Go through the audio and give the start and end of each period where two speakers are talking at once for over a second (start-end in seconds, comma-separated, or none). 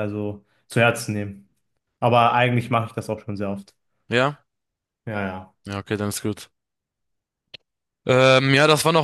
none